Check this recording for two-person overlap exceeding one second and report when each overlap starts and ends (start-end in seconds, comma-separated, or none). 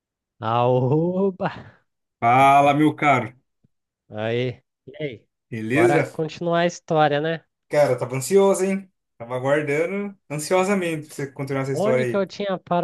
none